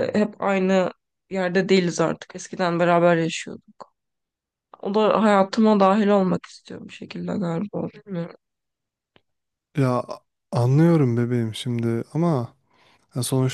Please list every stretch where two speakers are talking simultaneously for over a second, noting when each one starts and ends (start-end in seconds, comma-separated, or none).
none